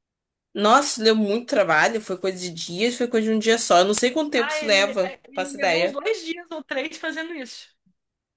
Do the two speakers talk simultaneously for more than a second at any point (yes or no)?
yes